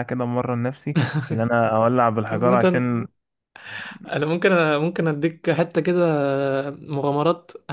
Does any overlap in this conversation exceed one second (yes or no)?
no